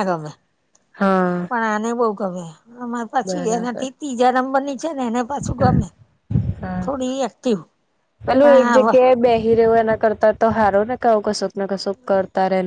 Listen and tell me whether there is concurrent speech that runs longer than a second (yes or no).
no